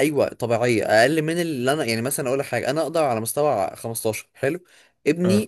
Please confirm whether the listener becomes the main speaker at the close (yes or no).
no